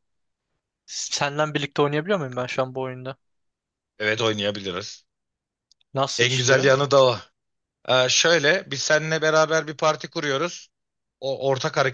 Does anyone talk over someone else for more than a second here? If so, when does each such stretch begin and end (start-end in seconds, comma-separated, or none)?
none